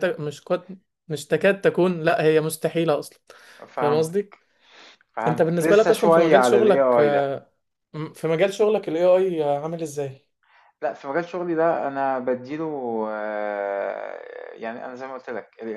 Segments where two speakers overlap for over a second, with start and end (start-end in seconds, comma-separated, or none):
5.3-7.3